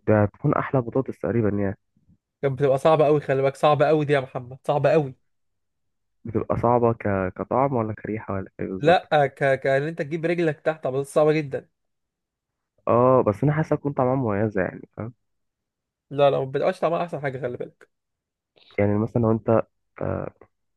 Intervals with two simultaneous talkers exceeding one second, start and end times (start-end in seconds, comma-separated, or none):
none